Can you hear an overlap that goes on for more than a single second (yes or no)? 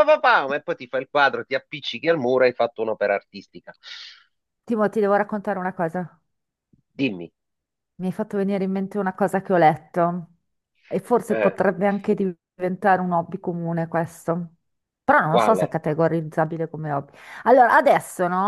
no